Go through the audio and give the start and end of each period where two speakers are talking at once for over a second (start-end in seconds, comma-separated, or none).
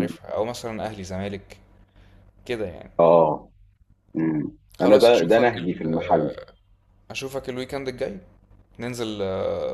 4.8-6.4